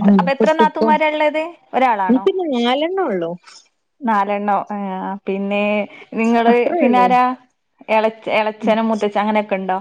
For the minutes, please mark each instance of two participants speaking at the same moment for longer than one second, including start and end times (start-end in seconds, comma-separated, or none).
none